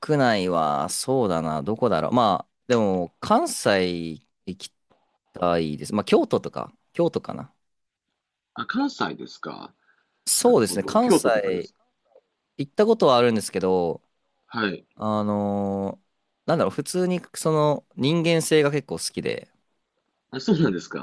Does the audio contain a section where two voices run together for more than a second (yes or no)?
yes